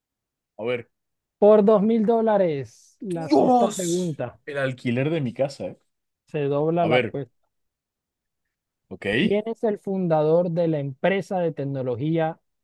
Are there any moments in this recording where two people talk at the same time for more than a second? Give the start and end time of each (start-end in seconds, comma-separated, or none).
3.1-4.4